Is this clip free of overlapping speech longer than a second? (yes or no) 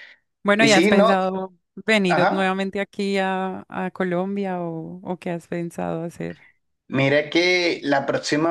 yes